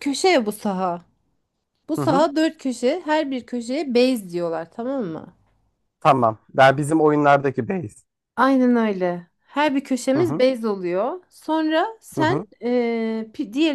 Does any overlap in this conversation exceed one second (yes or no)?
no